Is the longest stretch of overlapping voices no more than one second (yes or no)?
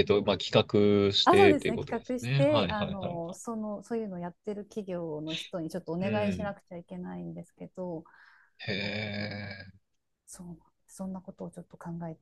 no